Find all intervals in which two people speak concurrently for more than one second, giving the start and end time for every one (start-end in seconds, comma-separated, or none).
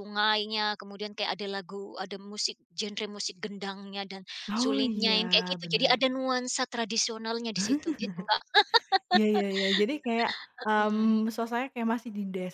4.5-6.0